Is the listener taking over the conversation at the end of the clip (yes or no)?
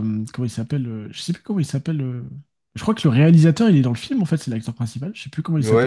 yes